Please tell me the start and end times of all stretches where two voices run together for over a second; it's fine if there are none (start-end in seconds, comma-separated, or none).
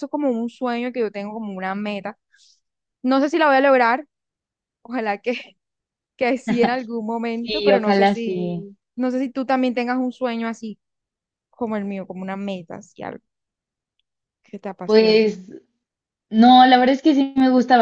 7.4-8.7